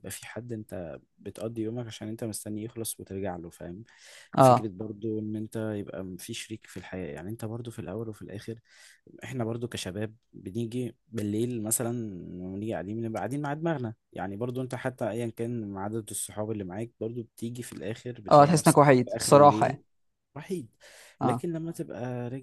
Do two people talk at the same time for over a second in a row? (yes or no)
yes